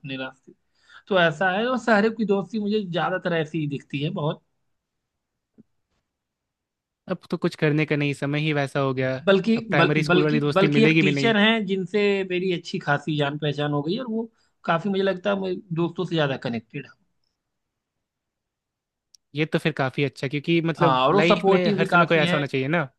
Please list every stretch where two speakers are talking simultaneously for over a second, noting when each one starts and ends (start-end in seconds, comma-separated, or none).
9.6-11.3, 20.8-22.4